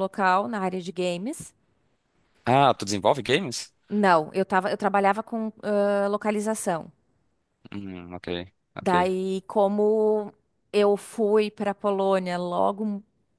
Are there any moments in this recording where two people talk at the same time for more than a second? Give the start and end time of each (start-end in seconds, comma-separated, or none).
none